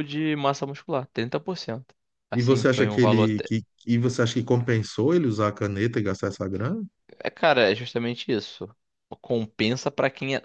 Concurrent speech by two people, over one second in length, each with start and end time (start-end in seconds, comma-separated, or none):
2.3-3.5